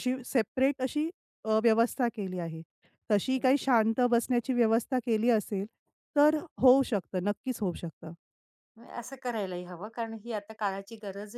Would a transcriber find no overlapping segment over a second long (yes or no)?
yes